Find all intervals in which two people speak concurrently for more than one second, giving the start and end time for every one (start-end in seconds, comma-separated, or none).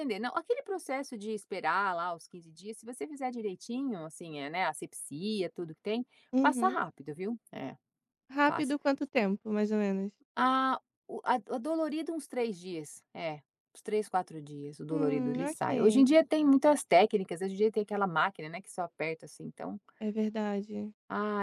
14.9-16.1